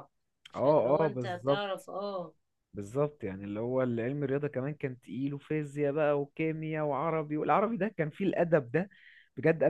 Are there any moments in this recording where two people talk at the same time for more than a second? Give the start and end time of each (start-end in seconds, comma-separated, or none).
0.6-1.9